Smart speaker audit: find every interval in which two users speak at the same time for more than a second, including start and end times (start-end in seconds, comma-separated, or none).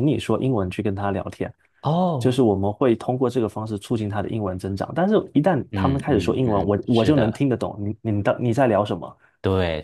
5.7-7.4